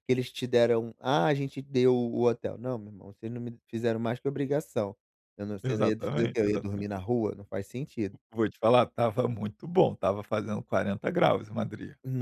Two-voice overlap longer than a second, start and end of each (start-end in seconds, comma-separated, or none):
5.6-6.9